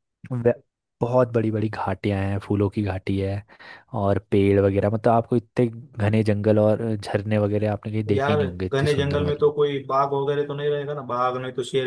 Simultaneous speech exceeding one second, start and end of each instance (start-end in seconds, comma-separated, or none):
8.1-9.5